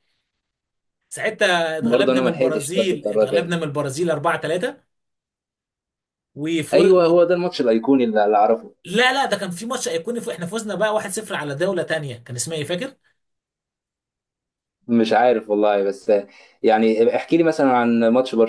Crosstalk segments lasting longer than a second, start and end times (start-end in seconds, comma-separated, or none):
1.8-3.5